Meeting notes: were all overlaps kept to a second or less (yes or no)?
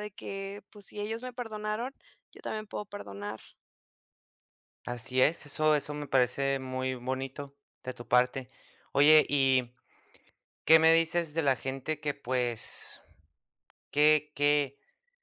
yes